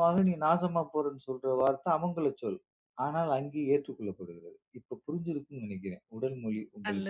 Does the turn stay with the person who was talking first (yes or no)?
no